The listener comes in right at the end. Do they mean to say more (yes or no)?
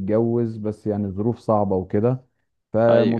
no